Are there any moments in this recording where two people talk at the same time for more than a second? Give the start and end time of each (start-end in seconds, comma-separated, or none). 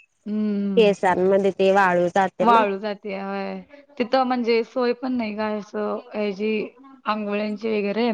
none